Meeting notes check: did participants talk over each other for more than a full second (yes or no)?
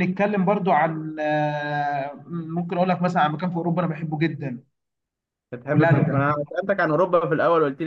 no